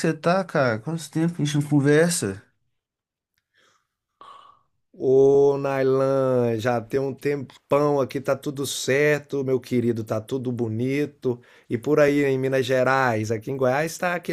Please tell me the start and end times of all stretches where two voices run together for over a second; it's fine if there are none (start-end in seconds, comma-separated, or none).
none